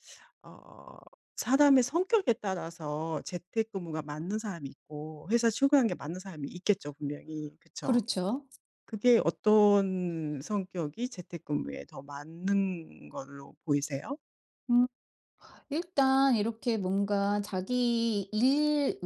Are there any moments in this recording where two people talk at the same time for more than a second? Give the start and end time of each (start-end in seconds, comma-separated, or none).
none